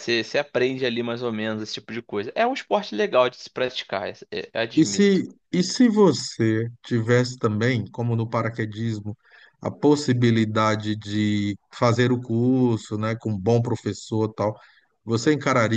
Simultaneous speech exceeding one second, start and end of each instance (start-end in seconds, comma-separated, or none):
none